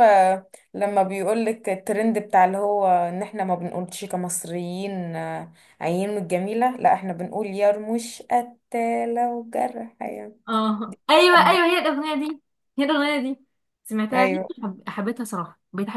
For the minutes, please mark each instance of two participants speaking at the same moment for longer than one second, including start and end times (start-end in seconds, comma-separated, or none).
none